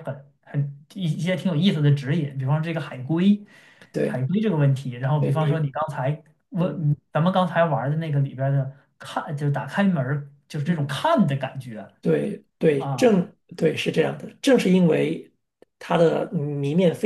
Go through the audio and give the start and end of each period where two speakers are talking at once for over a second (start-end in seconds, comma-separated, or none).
none